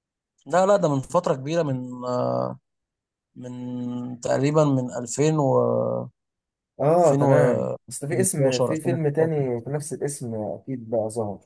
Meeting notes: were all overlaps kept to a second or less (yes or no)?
no